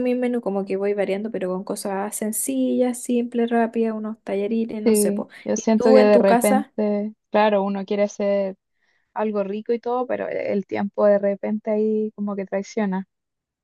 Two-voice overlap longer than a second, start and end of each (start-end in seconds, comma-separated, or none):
4.8-6.7